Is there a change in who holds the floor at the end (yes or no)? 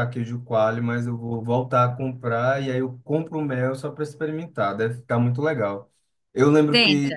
no